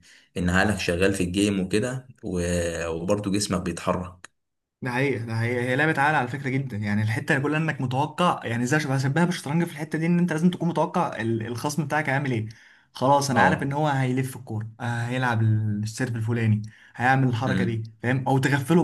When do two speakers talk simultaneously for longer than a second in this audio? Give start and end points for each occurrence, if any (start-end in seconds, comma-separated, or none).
none